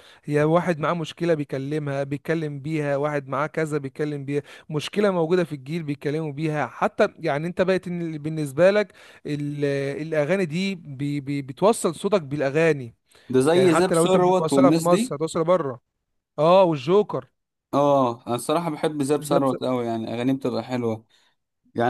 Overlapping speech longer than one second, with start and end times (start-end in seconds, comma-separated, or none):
13.6-15.0